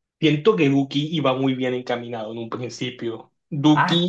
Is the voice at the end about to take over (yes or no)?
yes